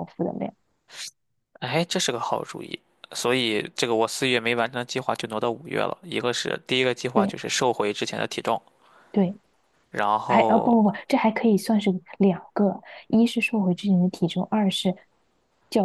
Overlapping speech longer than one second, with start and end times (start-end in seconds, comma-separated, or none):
none